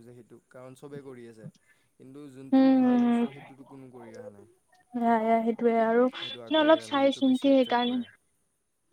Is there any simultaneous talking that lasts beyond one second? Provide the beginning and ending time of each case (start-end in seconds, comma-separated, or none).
6.2-8.0